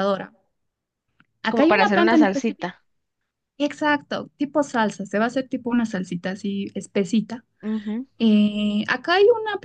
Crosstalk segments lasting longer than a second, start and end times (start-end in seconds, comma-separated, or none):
1.5-2.7